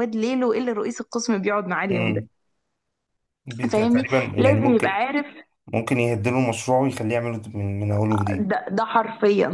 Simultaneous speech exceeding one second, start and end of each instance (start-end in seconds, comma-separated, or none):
3.7-5.0